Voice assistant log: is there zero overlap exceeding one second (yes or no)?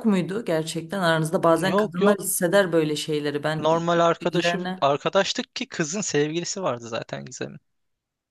no